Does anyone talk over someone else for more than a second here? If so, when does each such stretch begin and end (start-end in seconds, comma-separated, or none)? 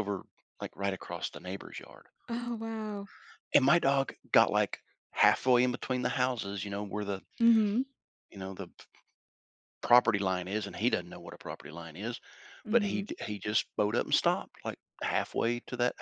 none